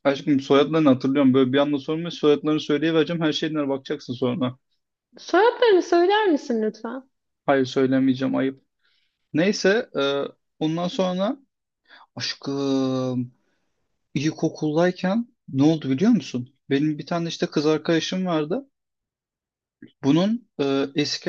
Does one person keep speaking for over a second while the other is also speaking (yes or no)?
no